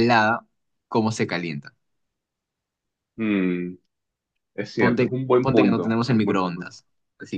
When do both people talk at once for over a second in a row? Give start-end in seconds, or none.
4.8-6.7